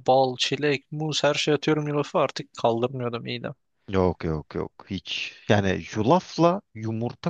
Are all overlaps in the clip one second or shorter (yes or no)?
yes